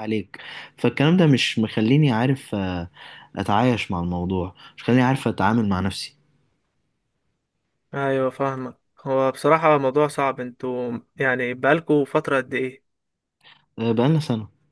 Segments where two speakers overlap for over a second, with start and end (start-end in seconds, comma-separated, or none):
none